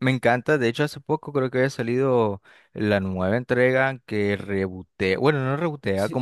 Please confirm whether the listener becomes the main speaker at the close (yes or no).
no